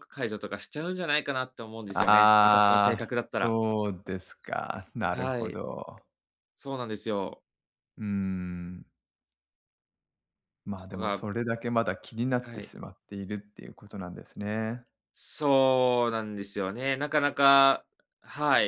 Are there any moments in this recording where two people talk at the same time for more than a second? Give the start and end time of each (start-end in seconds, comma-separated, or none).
1.9-3.5